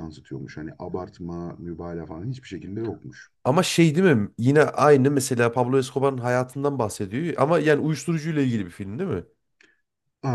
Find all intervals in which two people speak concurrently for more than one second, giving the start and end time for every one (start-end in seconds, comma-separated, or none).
none